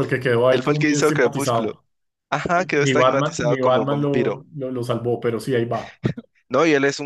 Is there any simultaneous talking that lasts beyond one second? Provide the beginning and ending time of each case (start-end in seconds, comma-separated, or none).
0.5-1.7, 2.8-4.4